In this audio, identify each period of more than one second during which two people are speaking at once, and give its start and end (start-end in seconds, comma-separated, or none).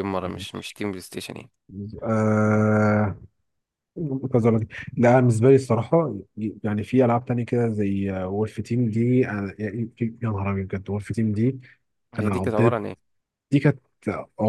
none